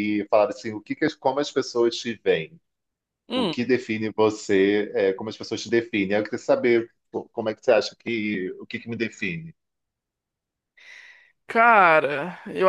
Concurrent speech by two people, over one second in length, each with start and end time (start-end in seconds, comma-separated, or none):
none